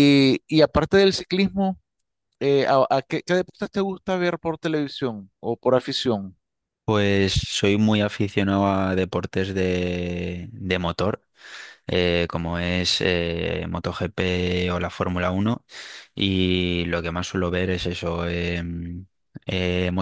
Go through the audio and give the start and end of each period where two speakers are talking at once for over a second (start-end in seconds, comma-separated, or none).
none